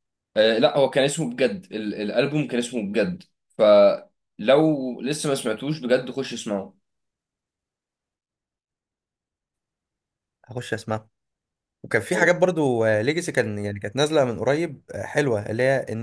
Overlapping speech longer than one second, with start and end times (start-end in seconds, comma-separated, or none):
none